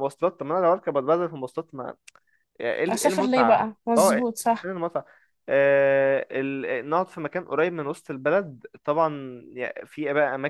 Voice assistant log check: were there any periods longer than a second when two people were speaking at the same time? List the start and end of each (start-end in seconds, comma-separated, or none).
2.9-4.7